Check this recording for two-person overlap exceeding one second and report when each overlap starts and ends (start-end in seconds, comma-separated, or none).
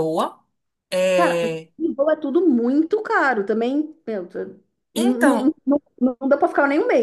none